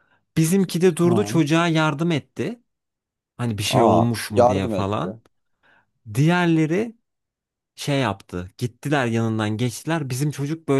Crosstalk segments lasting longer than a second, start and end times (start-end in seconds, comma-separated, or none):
3.7-5.2